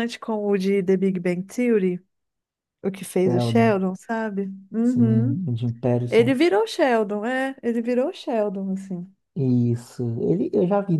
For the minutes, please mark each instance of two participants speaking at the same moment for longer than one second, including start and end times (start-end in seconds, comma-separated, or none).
none